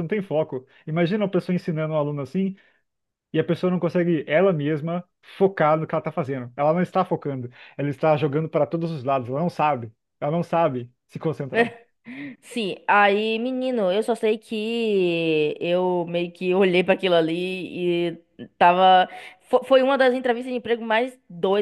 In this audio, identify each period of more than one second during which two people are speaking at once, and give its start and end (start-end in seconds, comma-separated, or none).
none